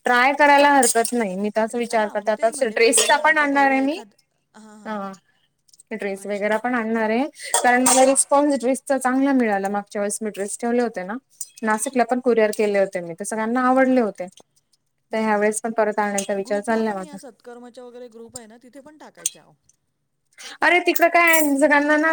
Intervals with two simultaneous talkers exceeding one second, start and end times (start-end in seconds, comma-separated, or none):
2.0-4.0